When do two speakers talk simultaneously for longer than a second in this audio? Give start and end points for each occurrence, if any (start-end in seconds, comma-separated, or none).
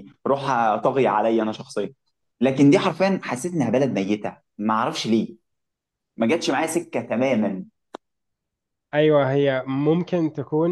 none